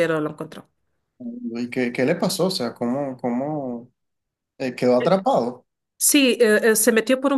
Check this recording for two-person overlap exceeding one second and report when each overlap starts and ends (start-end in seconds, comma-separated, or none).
none